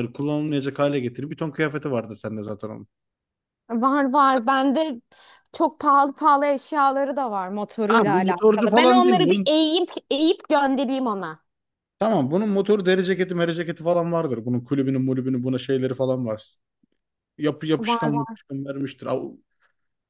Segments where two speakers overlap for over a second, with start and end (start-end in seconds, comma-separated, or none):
7.9-9.5